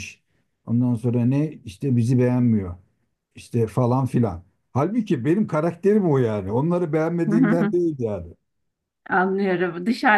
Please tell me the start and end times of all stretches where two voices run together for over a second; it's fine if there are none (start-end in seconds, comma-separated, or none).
none